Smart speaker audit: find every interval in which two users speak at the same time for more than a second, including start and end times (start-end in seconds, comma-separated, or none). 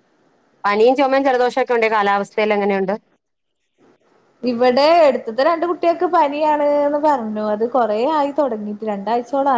none